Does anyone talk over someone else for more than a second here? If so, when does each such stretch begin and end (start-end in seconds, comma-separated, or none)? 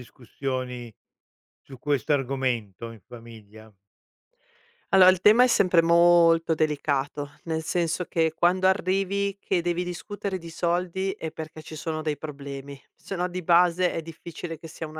none